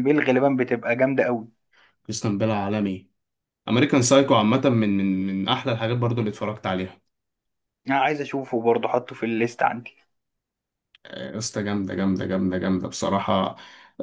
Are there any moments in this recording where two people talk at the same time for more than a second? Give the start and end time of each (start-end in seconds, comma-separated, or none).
none